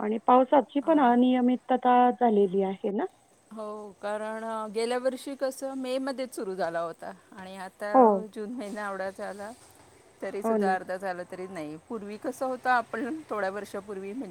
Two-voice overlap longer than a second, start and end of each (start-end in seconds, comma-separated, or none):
none